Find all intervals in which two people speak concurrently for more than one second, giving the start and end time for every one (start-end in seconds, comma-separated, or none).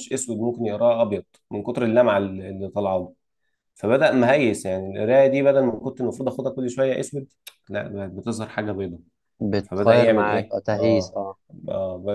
9.6-11.2